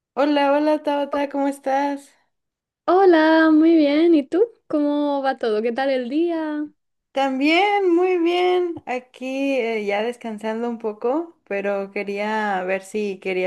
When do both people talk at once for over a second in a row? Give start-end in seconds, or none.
none